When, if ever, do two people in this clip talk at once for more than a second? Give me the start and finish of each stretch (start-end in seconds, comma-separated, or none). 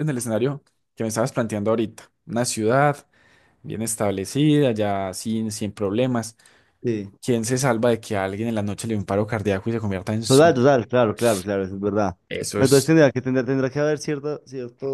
none